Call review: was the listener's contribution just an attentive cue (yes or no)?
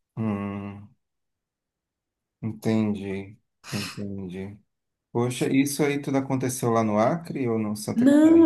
no